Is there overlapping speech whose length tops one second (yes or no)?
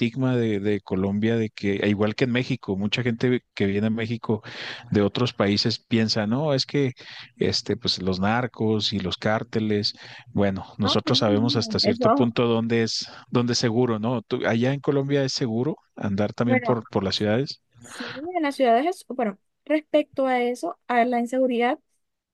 yes